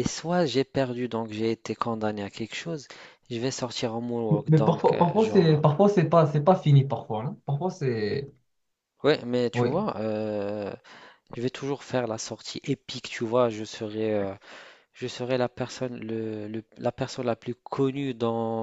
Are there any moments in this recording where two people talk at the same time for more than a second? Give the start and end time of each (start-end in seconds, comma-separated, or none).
4.3-5.6